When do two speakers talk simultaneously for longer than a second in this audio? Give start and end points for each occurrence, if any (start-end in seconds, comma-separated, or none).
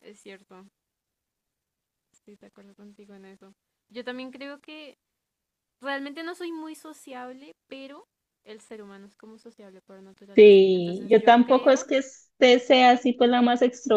10.3-11.8